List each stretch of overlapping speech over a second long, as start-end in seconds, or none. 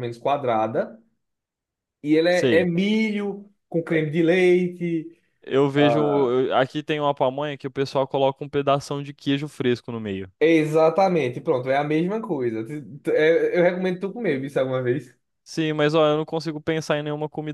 none